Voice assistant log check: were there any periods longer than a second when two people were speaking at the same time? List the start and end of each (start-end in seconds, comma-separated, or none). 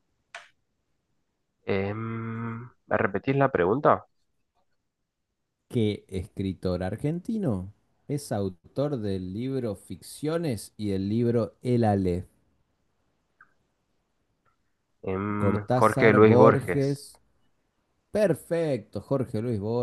15.3-17.1